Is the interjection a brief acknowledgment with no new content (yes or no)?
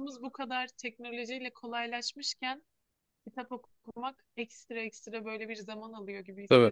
yes